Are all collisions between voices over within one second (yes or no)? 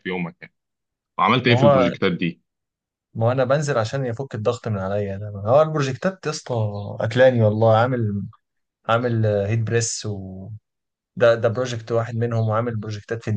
yes